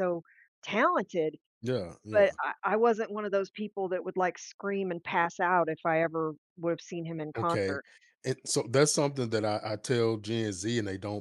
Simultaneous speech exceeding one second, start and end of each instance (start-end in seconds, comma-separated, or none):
none